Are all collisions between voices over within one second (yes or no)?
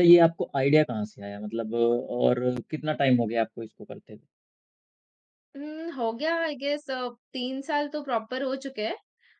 yes